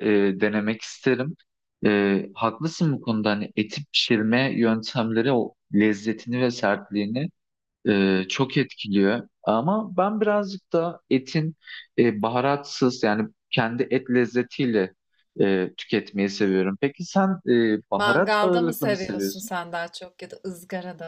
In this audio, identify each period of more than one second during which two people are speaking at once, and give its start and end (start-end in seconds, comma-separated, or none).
17.9-19.5